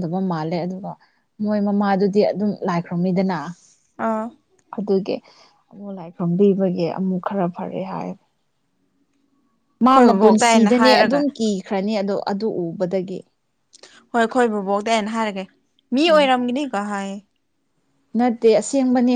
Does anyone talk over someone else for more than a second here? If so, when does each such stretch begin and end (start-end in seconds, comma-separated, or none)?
9.8-11.2